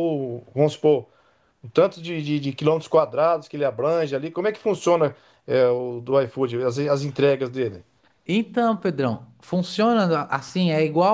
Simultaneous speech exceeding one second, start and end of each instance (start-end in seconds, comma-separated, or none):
none